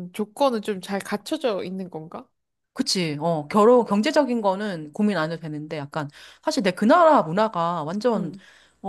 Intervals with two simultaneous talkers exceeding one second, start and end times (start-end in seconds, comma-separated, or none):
none